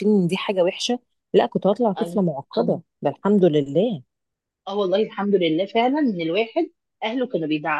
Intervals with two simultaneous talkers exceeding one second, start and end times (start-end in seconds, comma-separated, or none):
none